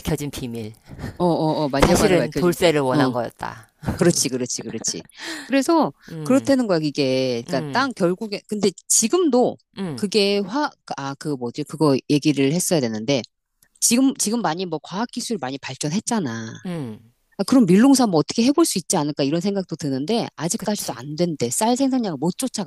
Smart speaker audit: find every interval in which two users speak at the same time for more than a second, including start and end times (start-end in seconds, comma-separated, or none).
1.8-3.1